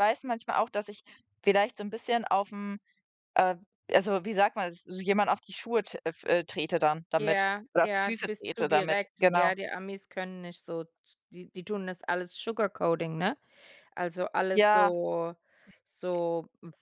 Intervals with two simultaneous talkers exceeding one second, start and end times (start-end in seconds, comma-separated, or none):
7.2-9.5